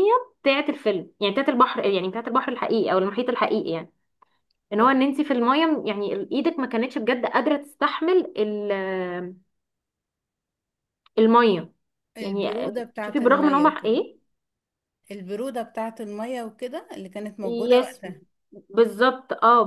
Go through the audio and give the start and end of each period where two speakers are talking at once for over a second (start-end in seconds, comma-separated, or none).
12.2-14.0